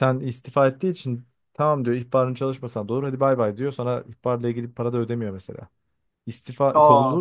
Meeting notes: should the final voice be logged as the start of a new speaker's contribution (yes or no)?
no